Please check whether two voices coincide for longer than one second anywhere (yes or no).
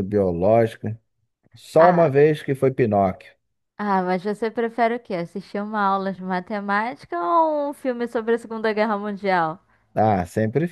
no